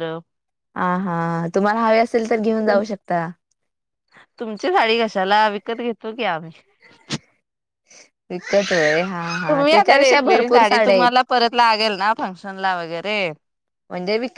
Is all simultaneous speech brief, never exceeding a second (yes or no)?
no